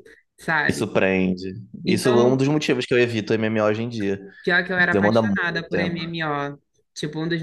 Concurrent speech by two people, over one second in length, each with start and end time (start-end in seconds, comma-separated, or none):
4.8-6.2